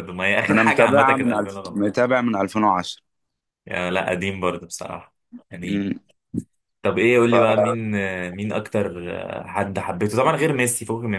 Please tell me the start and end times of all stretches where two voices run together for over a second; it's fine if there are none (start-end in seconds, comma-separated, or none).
0.5-1.9